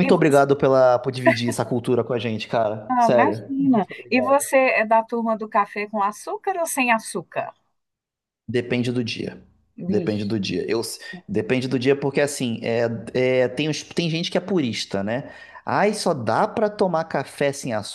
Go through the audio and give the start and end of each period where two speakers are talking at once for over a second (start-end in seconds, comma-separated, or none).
2.9-4.5